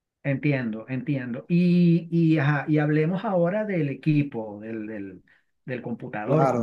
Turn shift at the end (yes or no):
yes